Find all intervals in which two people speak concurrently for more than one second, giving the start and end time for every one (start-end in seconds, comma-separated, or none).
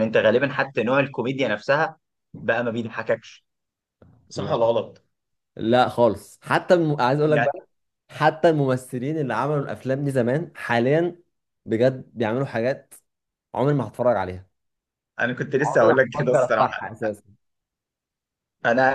15.6-16.9